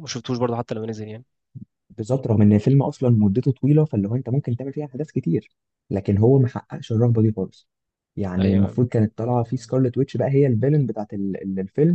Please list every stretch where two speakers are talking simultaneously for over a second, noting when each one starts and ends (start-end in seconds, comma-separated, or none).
none